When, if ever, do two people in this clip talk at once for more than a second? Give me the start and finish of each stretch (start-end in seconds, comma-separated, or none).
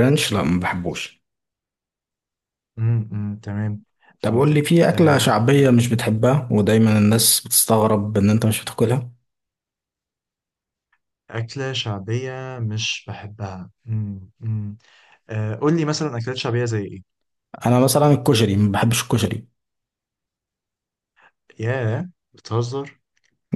4.2-5.6